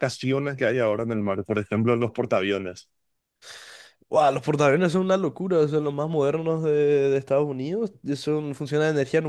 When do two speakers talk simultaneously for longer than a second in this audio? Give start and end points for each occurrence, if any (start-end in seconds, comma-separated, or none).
none